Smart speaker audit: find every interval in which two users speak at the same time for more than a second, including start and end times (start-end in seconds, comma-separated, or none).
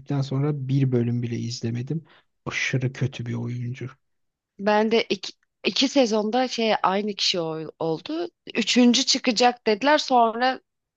none